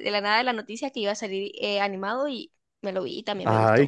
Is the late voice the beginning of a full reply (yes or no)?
yes